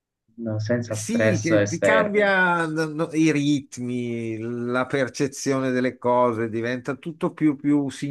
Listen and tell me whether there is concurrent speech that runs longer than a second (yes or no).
yes